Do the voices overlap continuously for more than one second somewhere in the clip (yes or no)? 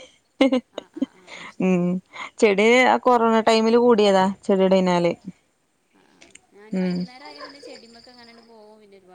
no